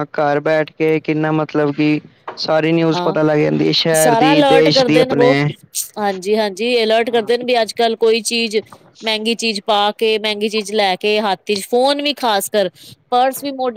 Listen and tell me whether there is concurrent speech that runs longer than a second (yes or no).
yes